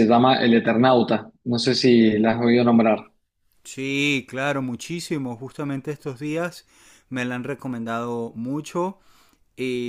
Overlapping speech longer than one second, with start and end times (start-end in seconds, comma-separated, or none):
none